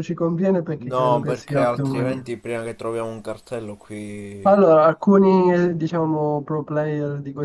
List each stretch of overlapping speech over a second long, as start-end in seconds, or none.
0.8-2.3